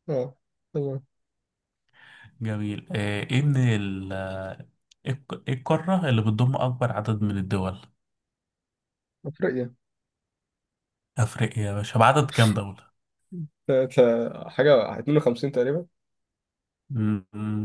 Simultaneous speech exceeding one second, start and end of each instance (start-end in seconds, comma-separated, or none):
none